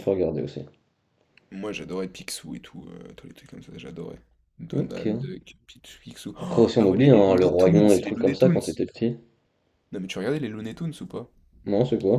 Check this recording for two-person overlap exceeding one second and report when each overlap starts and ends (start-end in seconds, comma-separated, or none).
6.4-8.6